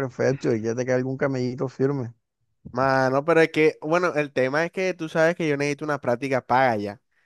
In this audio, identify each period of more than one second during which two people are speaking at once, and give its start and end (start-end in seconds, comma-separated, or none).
none